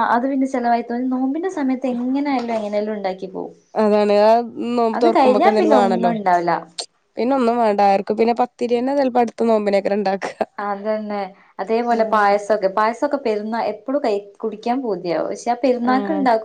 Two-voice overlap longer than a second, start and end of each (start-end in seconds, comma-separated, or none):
5.0-6.5